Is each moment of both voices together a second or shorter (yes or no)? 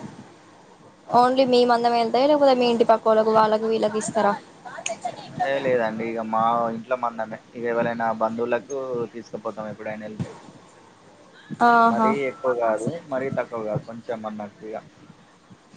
yes